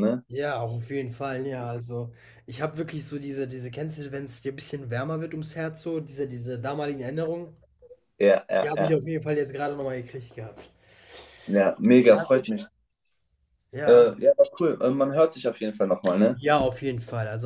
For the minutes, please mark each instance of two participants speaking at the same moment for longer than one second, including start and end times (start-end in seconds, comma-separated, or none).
none